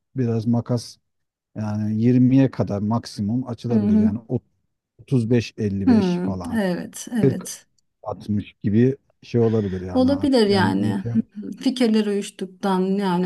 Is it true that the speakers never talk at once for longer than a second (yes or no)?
no